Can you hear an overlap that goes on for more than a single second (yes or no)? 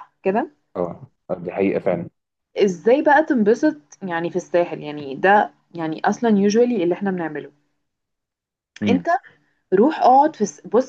no